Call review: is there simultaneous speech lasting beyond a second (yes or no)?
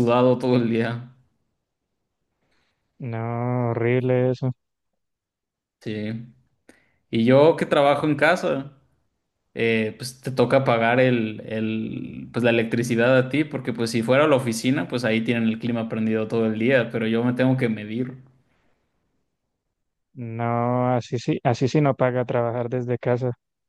no